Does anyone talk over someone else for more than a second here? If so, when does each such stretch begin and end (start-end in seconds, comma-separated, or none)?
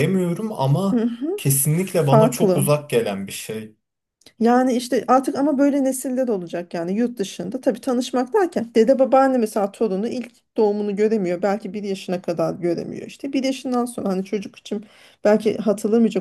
0.9-2.7